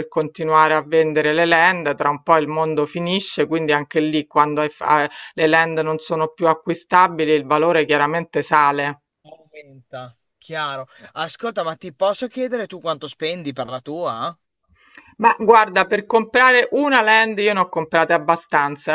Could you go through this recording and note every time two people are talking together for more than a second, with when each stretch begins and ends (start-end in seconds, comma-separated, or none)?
none